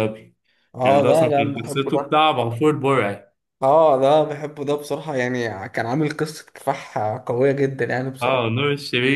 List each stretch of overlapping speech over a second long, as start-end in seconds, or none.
0.8-2.1